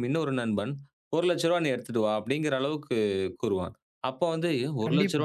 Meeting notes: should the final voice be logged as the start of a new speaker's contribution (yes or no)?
no